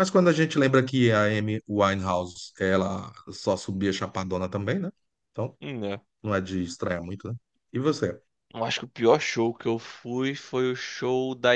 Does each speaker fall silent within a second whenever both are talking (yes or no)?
yes